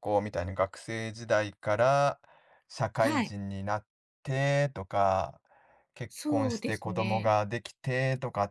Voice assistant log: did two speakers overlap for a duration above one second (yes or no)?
yes